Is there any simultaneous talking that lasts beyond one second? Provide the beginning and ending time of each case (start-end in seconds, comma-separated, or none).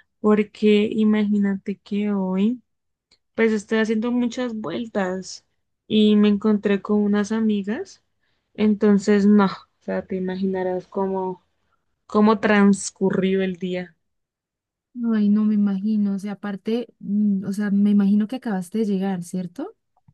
none